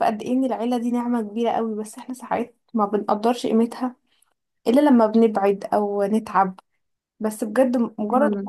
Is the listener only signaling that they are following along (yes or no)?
yes